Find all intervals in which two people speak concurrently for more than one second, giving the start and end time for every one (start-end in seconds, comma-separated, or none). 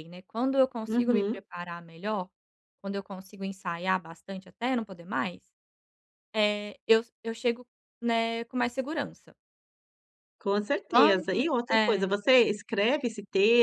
10.9-12.2